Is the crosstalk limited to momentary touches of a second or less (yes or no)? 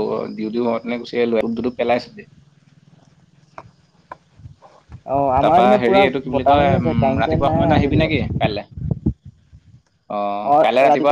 no